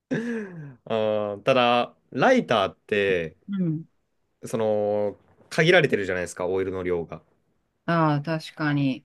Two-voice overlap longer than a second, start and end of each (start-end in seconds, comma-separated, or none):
none